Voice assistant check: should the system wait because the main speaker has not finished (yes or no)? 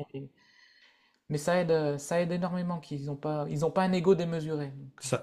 no